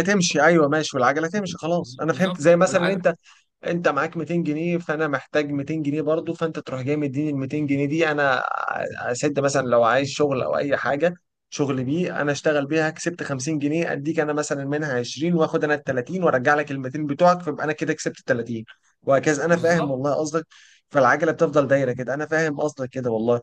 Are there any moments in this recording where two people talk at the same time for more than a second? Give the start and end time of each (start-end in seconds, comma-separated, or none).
1.8-3.0